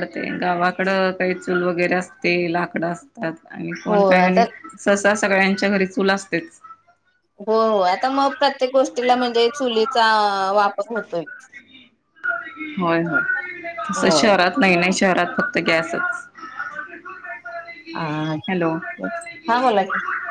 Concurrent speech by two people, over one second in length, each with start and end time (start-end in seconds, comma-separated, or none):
none